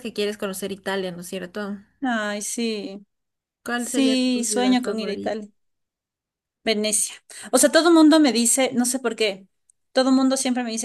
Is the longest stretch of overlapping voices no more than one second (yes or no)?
no